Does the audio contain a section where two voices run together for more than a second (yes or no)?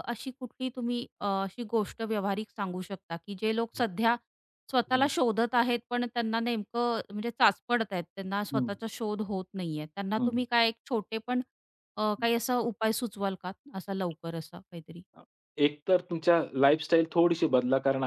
no